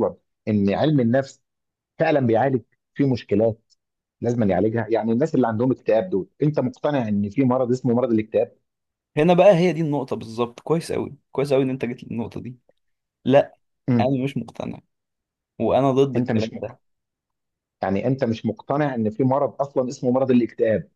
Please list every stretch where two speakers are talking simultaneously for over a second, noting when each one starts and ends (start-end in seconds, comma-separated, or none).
none